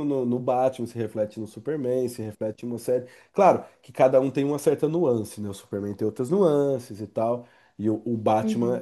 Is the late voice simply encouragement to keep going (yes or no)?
yes